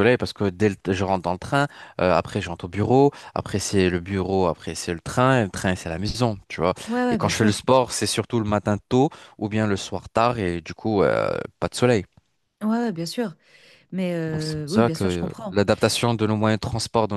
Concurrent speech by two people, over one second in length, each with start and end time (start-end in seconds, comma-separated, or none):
14.3-15.6